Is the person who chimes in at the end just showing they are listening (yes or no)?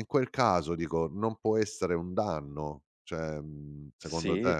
no